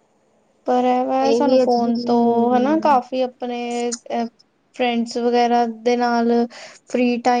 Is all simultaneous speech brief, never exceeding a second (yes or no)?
no